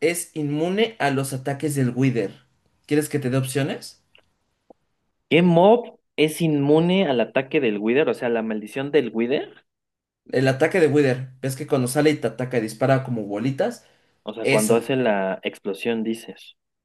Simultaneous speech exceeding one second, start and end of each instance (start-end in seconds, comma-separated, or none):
none